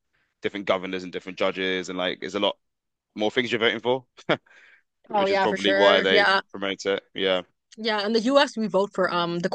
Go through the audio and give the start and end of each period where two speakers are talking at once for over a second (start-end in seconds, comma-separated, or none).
5.2-6.4